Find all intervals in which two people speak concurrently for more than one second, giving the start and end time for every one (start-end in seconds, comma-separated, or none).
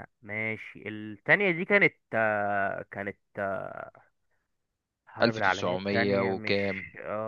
5.2-6.6